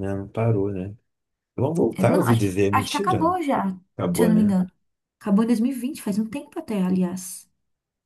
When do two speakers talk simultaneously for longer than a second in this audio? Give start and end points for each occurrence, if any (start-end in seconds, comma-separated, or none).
1.9-3.3